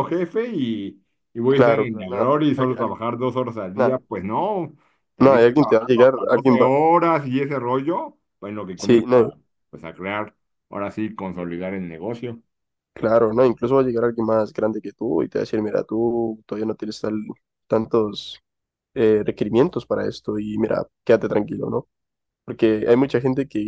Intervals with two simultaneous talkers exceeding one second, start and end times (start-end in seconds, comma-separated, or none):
1.5-3.0, 5.2-6.7